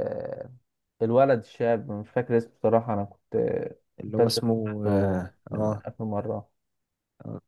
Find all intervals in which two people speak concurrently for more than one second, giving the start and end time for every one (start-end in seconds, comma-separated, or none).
4.1-5.8